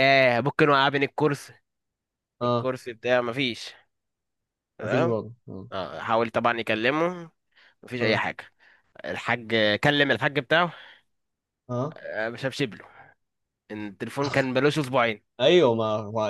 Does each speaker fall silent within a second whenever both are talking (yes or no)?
yes